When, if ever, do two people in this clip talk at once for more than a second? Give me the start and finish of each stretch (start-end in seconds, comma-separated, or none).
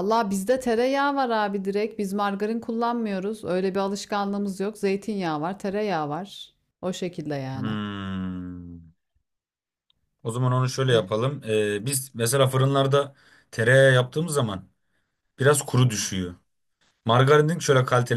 none